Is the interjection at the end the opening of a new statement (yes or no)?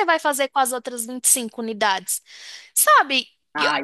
no